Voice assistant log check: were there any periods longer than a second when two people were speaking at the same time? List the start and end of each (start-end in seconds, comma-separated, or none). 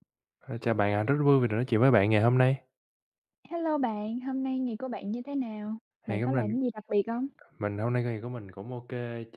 none